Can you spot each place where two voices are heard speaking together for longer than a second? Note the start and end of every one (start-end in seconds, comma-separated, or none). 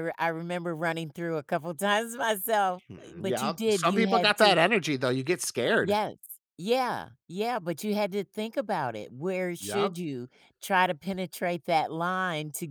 2.7-4.6